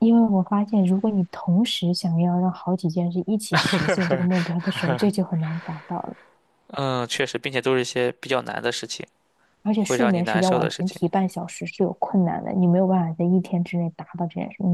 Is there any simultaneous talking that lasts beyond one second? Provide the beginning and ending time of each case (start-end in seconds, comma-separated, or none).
9.8-11.0